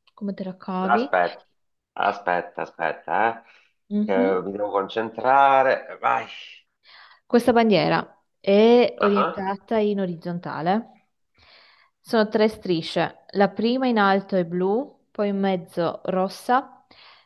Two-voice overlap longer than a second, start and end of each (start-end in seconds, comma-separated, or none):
none